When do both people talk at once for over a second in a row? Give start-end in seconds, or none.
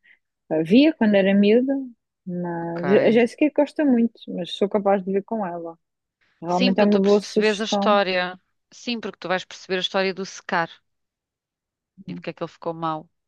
6.5-8.0